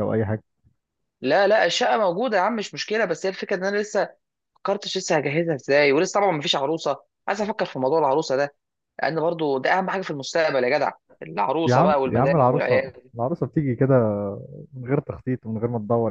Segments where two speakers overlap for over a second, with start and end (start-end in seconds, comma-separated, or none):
11.7-13.1